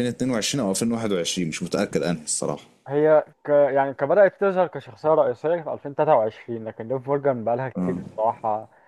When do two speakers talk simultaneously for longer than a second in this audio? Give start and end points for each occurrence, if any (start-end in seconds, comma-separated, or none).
none